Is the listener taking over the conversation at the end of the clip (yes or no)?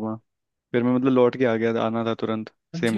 yes